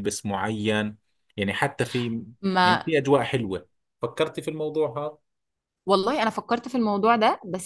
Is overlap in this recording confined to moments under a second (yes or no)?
yes